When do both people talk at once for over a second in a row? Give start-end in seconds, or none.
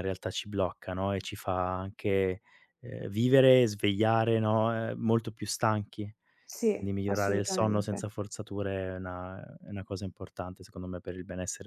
6.8-8.1